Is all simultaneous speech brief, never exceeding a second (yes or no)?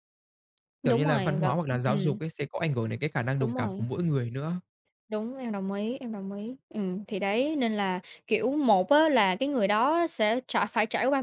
no